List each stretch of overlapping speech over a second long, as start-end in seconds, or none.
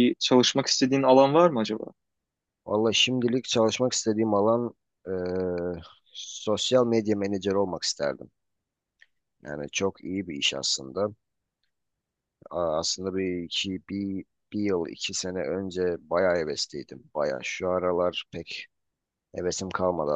none